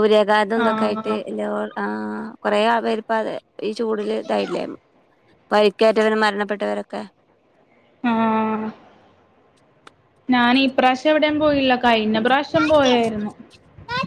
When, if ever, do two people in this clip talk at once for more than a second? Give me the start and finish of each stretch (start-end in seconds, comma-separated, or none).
none